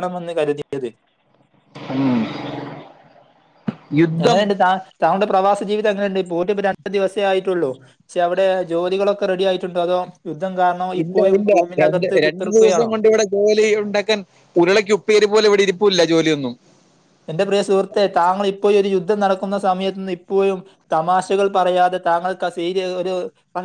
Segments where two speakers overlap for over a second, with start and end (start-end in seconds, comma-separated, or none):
none